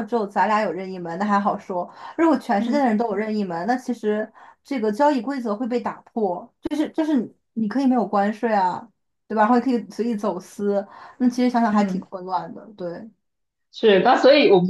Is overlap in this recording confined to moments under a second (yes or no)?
yes